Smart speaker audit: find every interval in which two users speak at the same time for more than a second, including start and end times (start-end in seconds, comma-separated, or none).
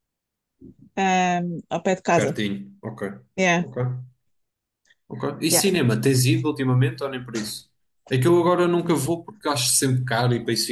none